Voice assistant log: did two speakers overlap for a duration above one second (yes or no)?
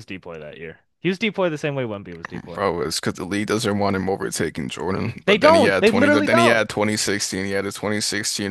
yes